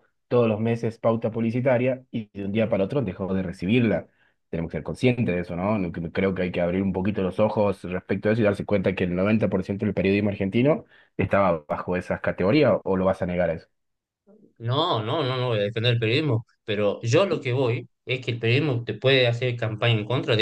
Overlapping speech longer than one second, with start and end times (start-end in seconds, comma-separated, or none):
none